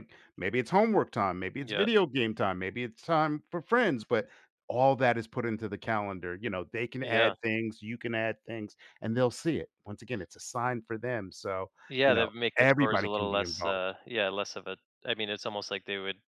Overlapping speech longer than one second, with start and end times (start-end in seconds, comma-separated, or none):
12.1-13.9